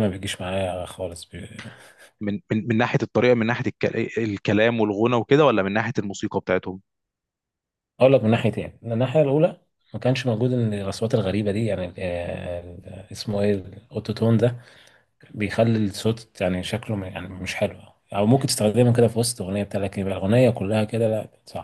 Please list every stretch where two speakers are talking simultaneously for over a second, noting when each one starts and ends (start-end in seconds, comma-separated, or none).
none